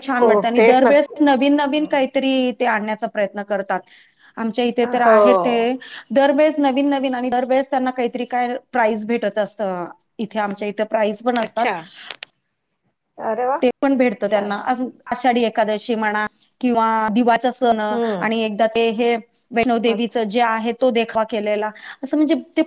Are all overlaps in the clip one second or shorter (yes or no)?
yes